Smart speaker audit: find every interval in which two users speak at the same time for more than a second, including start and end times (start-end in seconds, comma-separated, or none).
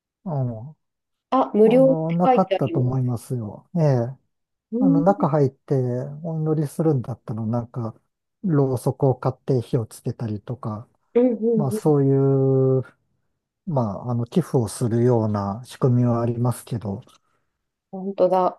1.6-3.1